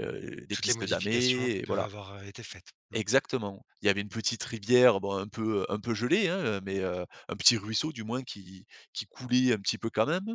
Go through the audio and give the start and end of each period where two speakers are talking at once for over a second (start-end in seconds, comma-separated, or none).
0.5-1.9